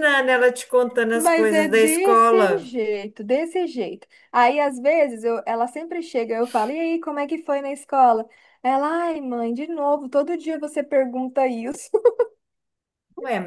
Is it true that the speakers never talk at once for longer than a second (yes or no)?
no